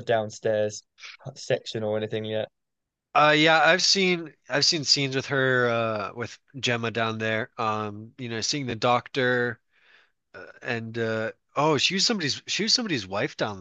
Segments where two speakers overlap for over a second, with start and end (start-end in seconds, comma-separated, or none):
none